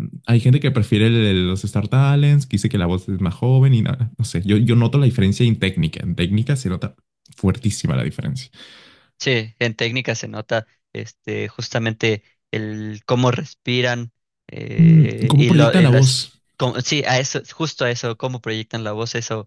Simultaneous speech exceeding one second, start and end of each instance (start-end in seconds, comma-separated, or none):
14.8-16.4